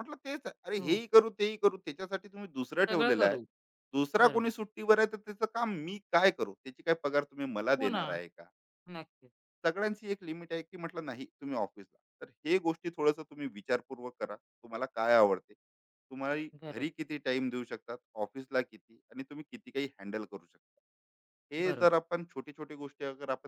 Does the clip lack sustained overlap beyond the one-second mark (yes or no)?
yes